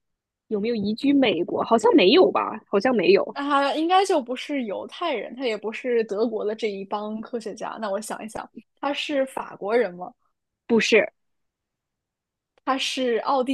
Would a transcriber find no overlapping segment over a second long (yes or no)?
yes